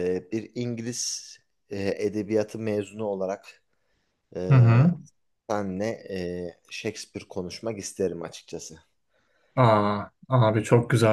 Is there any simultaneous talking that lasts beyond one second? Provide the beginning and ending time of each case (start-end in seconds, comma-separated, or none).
none